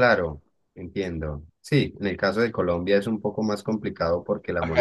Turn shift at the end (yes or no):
yes